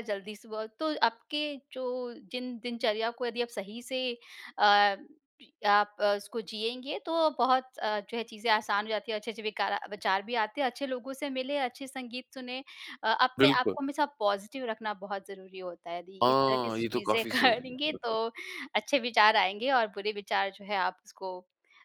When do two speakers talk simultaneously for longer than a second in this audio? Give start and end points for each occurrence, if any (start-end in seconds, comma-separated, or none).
16.2-18.2